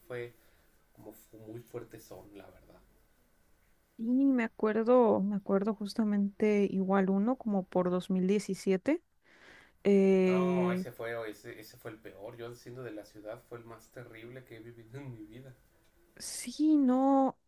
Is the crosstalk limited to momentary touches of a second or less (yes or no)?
yes